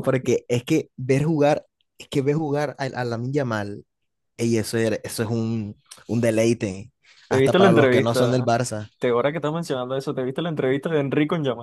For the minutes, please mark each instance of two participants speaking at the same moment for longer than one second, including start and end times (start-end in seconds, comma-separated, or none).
7.3-8.5